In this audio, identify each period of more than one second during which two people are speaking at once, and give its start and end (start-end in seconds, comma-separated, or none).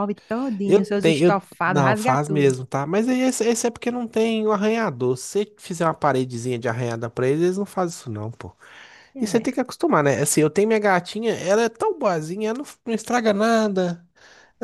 0.6-2.5